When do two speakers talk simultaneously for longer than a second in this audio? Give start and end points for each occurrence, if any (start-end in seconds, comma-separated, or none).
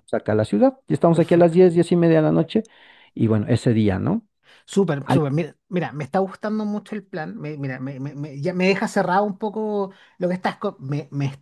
none